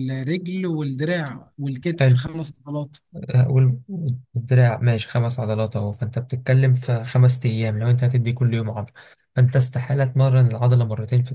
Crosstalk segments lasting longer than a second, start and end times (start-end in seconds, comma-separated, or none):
none